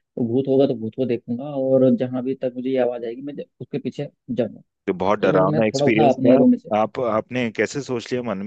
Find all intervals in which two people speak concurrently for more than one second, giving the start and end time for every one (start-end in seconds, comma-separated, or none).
5.2-6.7